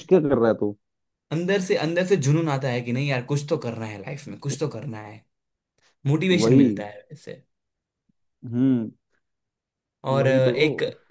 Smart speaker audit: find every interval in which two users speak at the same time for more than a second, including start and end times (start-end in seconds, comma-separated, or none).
none